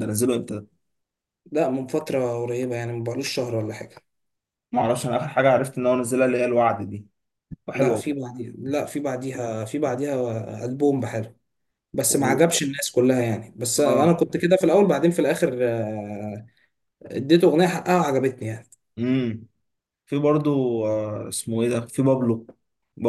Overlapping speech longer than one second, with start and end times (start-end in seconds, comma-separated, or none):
none